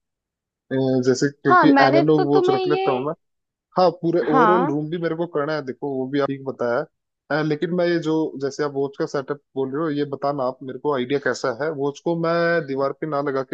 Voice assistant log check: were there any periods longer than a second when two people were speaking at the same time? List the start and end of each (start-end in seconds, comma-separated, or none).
1.5-2.8